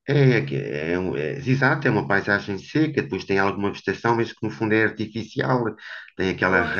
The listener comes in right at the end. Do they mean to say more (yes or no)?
no